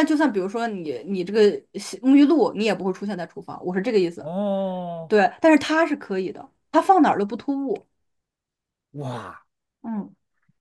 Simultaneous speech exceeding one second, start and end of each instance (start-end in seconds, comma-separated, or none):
none